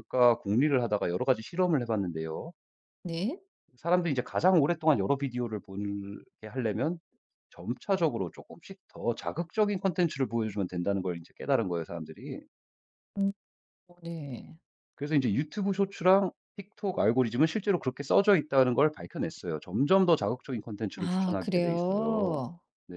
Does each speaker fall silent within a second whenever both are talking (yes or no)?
no